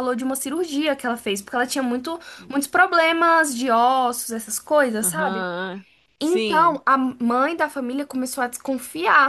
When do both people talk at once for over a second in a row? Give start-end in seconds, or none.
none